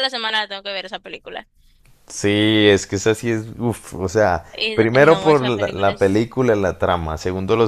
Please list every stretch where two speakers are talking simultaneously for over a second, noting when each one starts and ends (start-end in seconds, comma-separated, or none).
4.5-6.2